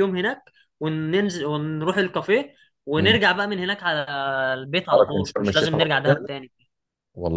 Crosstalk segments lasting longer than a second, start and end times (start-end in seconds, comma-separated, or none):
4.9-6.3